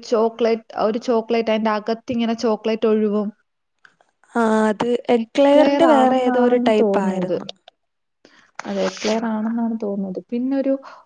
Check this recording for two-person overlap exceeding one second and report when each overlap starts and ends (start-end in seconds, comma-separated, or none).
5.2-7.4